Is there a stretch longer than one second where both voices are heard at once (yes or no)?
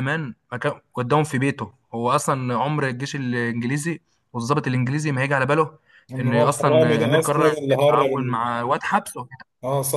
yes